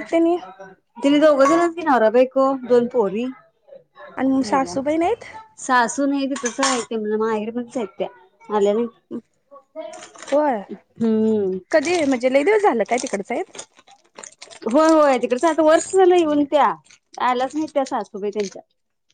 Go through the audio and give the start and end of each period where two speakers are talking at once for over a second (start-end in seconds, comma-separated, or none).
none